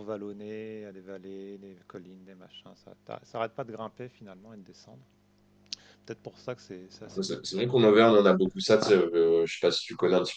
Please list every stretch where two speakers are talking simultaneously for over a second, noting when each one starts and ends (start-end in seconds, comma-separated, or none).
none